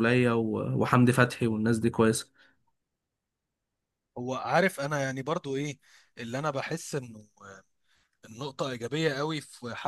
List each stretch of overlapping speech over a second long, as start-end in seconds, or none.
none